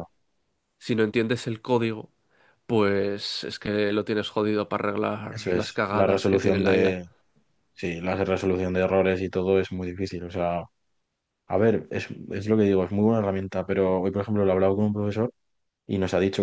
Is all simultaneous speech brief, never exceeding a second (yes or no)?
no